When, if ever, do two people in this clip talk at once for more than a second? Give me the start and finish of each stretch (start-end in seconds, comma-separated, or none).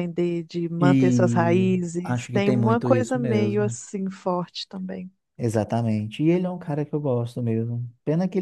0.8-3.8